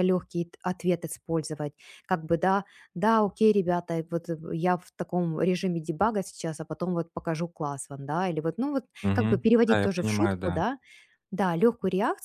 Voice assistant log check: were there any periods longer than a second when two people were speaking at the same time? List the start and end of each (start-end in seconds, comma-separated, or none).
9.0-10.6